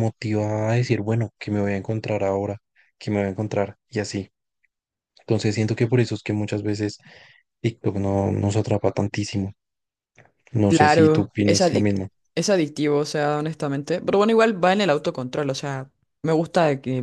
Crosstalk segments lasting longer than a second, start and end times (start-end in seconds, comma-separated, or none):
10.7-11.9